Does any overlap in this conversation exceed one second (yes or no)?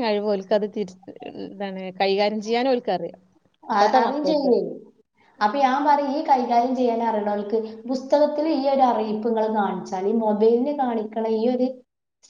no